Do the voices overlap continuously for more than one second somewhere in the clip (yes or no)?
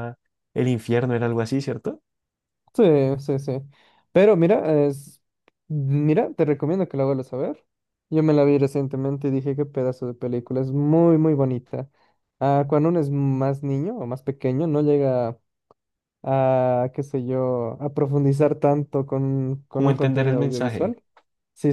yes